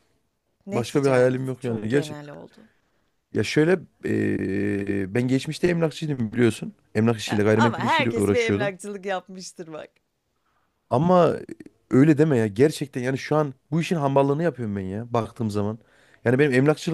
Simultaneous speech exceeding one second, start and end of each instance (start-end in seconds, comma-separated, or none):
0.7-2.2, 7.3-8.7